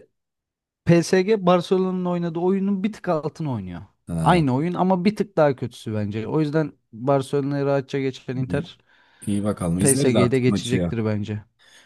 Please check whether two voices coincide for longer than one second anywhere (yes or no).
yes